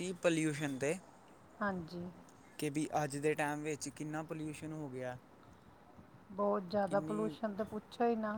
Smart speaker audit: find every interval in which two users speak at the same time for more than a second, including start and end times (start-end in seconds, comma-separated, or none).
none